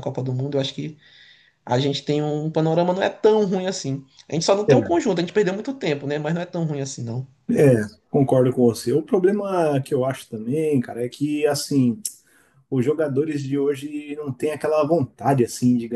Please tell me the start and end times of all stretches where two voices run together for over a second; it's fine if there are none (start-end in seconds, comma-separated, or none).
none